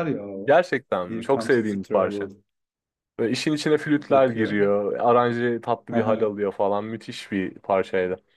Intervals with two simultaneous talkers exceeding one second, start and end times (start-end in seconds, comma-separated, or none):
1.1-2.3